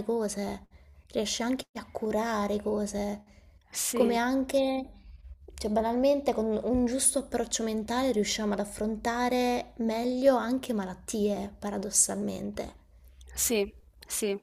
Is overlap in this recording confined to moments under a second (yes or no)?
yes